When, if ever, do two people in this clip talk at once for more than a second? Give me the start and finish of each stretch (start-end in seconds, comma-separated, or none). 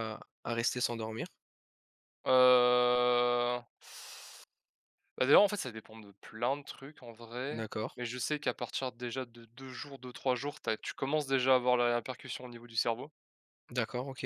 none